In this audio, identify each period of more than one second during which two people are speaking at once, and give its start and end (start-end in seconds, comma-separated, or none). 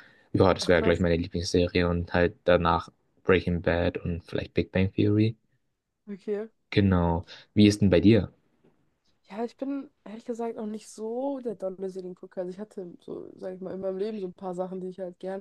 none